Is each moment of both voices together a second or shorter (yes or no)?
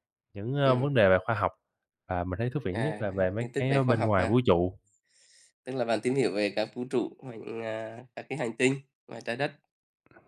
no